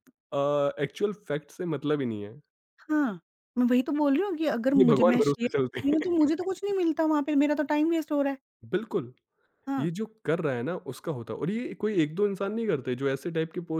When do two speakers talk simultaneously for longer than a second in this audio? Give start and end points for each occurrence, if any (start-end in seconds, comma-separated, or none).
4.8-6.0